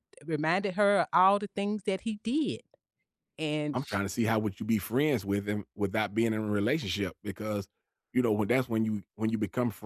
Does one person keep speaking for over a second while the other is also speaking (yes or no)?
no